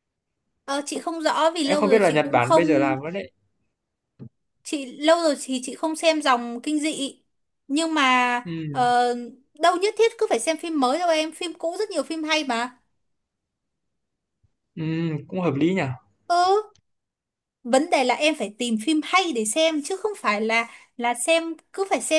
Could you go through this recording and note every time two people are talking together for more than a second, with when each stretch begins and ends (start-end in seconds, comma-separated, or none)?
1.6-3.0